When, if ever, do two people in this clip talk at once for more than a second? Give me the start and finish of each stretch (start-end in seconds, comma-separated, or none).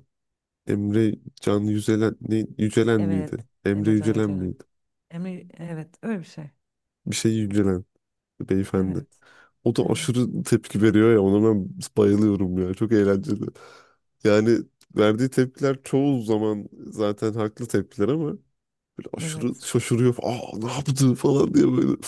3.0-4.5